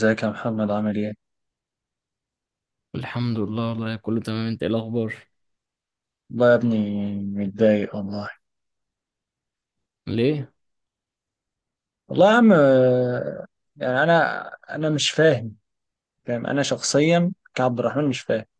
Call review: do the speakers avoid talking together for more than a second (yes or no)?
yes